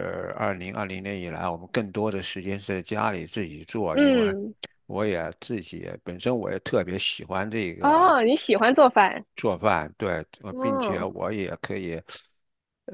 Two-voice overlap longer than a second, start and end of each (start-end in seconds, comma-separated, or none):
none